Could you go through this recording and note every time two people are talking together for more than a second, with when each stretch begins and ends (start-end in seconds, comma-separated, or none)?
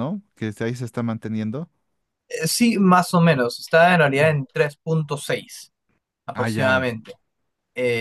none